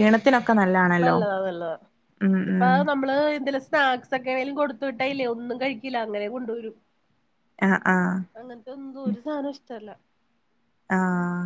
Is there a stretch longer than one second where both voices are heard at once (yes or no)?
no